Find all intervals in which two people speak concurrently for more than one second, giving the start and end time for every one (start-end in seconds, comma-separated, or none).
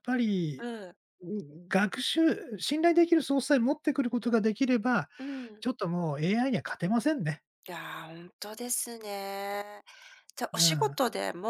none